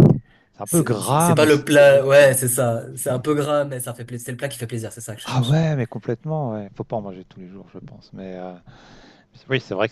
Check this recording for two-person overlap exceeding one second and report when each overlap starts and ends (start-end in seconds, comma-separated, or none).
0.6-2.4